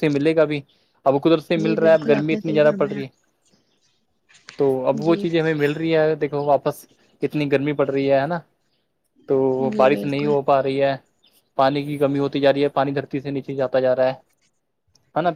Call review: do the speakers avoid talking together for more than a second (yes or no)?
no